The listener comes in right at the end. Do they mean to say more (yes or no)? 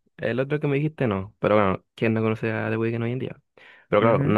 no